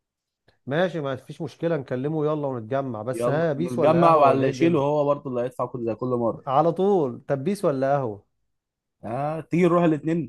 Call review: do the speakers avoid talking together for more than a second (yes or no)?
no